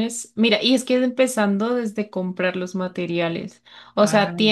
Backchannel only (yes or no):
yes